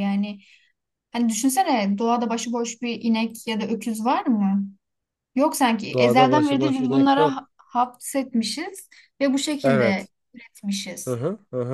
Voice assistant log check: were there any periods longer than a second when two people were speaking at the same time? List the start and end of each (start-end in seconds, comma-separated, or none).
5.9-7.5